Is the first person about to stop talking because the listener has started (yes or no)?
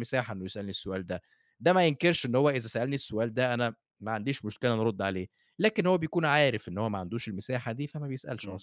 yes